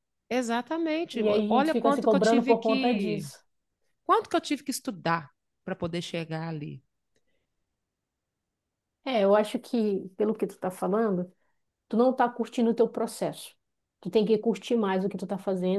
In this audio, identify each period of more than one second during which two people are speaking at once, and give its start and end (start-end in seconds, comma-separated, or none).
1.1-3.3